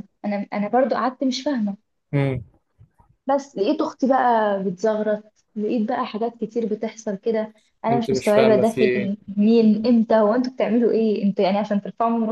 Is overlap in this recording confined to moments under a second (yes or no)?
no